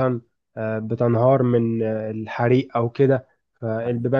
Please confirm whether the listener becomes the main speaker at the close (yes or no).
no